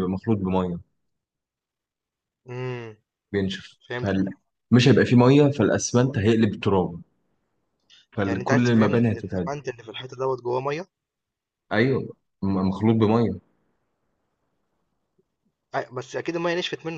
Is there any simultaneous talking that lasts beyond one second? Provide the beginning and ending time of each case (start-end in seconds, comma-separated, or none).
8.2-9.5